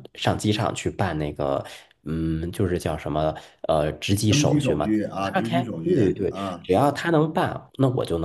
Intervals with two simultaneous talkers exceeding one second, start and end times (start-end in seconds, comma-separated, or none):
4.3-6.7